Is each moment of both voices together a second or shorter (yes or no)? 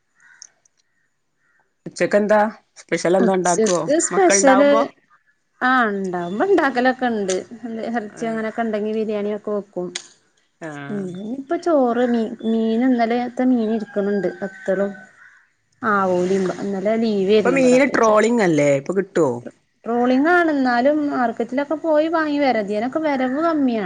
no